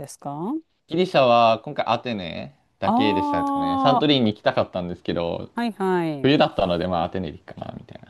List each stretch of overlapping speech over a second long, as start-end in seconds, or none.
2.8-4.2